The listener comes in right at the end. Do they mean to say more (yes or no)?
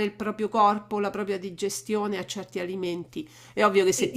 no